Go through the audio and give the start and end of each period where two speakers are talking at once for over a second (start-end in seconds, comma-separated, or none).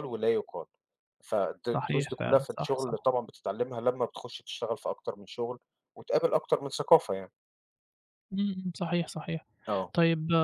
1.7-3.1